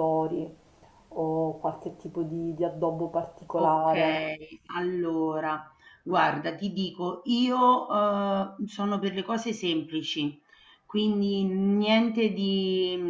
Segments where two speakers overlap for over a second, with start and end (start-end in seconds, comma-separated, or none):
none